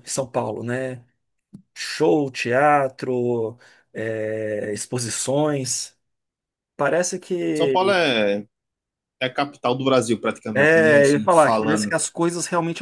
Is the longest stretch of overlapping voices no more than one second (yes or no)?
no